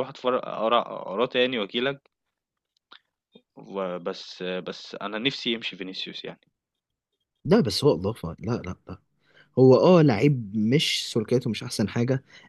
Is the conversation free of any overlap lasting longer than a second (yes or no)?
yes